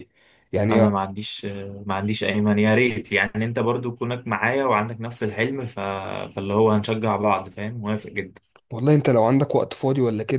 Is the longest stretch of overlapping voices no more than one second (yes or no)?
yes